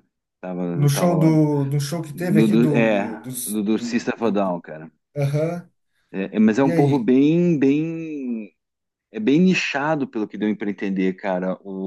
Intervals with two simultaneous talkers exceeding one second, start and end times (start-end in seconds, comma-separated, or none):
2.1-4.0